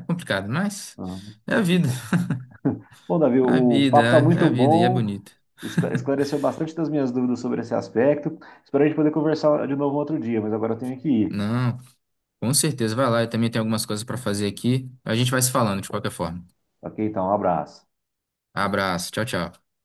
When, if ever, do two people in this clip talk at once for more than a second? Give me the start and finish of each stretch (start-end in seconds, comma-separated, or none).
3.5-5.0